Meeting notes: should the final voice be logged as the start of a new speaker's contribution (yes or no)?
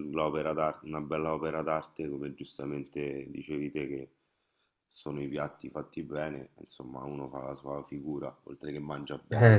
yes